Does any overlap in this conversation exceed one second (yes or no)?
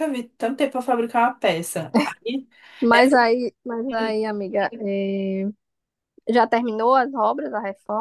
no